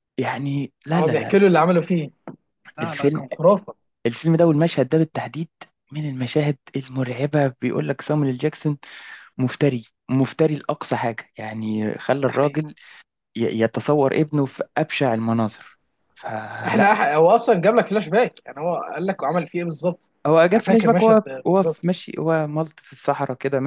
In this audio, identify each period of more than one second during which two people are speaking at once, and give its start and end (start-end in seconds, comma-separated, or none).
20.5-21.9